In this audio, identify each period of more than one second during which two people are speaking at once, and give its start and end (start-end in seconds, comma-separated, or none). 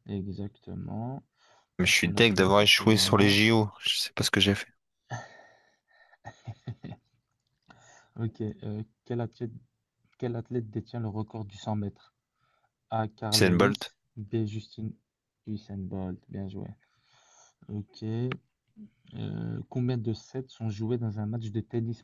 1.8-3.4